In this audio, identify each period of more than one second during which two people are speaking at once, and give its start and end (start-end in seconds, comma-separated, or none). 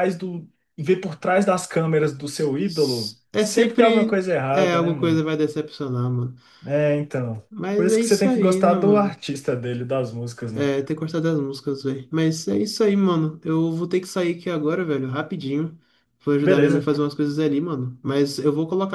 2.6-5.2, 7.5-9.2